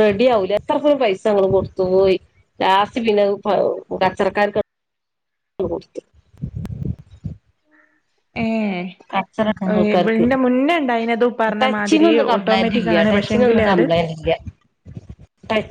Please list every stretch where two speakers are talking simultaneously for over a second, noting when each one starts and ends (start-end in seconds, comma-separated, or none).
11.6-13.8